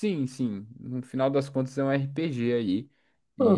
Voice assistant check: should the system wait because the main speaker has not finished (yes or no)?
yes